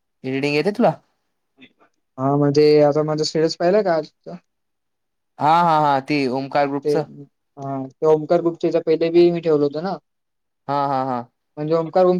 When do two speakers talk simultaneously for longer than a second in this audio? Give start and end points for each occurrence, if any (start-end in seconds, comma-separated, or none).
none